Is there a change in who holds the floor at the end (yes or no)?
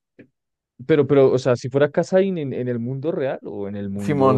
yes